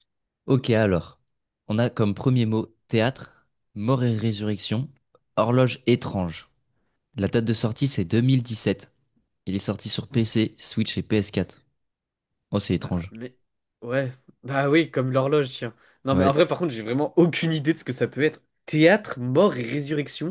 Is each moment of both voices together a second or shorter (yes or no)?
yes